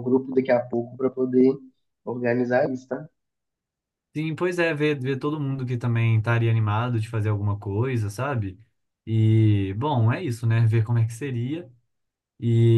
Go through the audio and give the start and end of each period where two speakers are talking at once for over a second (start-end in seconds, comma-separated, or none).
none